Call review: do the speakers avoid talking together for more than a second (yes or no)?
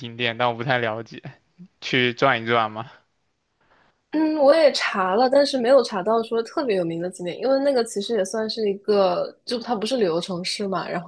yes